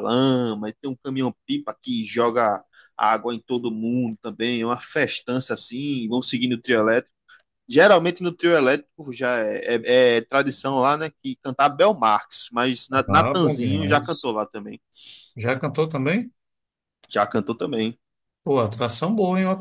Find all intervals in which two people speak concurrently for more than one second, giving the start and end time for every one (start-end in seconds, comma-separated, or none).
13.1-14.3